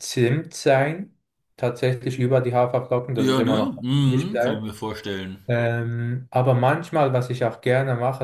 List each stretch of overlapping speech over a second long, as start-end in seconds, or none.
3.2-4.7